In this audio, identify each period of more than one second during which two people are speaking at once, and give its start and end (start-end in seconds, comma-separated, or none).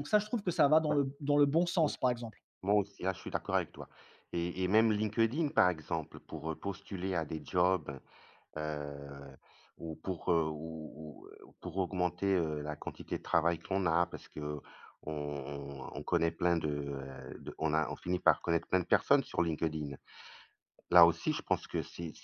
none